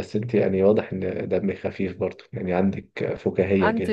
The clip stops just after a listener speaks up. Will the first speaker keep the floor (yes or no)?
yes